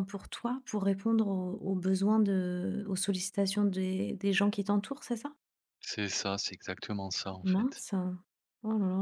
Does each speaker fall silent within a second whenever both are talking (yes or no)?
yes